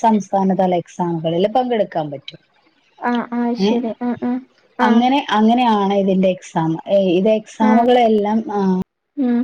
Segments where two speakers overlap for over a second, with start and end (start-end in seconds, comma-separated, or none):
none